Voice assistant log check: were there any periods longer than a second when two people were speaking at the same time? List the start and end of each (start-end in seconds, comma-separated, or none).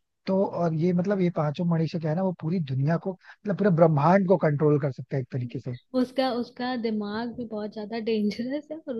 none